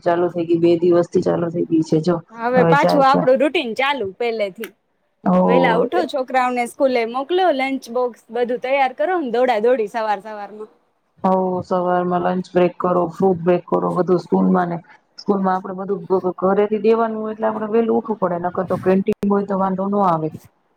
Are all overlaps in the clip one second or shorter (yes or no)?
yes